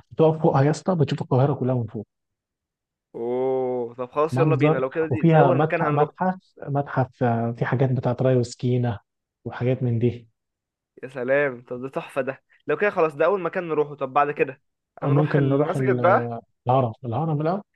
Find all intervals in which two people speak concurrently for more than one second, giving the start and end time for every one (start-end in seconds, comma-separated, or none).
4.3-6.1, 15.0-16.4